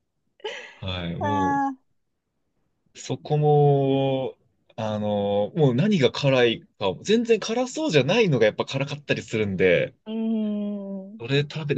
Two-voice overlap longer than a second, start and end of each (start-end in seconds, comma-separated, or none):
none